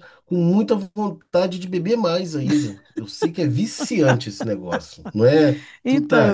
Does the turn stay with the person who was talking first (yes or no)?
no